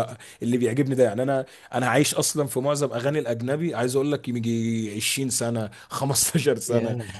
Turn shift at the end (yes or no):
no